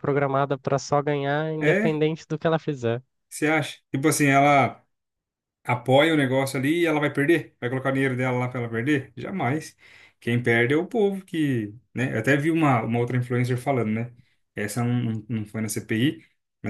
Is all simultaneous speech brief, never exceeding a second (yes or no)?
yes